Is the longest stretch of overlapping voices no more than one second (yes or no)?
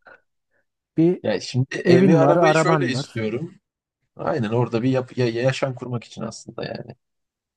no